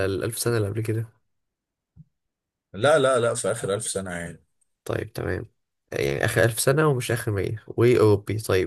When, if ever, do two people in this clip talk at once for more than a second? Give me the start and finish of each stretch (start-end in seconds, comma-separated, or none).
none